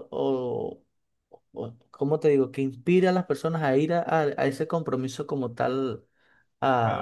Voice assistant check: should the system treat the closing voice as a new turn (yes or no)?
yes